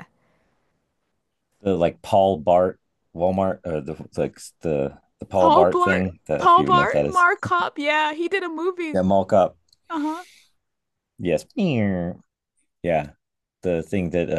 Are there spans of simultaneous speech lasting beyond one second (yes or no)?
yes